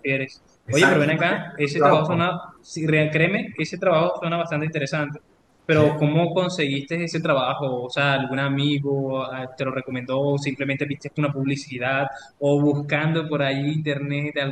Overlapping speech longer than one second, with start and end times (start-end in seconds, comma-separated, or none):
0.7-2.3